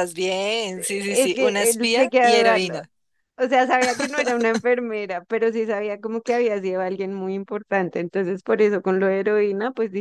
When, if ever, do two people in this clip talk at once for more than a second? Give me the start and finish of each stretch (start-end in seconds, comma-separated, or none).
1.1-2.8